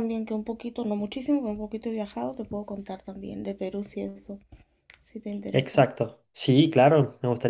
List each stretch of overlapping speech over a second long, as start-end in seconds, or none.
none